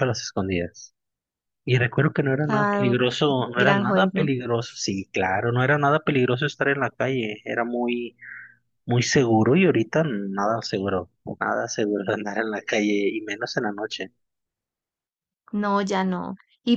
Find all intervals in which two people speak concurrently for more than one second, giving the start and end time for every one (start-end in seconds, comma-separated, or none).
2.5-4.3